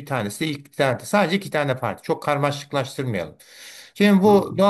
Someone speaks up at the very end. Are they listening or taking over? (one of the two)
listening